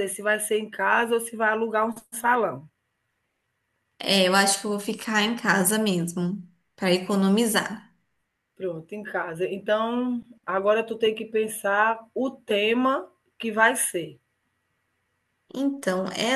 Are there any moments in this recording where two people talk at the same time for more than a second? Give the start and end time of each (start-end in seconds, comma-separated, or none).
none